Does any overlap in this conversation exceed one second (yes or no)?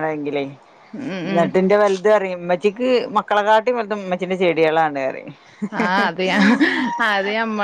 no